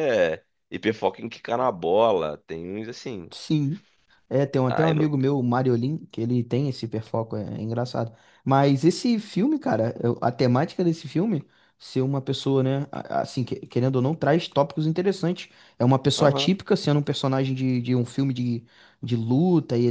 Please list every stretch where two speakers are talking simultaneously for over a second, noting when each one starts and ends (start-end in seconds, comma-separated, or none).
none